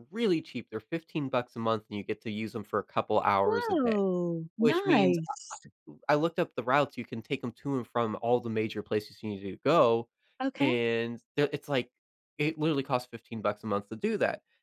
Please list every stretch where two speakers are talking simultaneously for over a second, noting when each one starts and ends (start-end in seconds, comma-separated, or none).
none